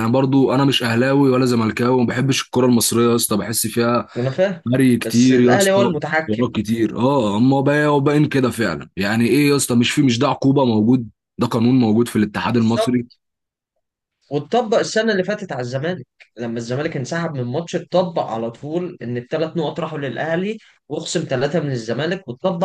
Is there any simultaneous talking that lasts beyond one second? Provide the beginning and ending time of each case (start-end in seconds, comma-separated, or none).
5.0-6.5